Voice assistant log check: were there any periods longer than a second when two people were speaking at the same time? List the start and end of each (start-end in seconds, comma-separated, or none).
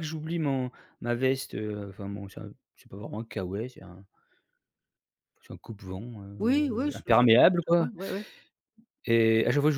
6.4-7.9